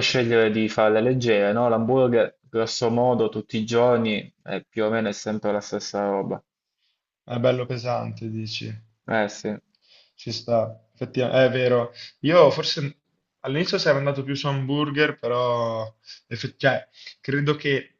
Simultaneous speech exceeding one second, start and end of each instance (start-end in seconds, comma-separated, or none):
none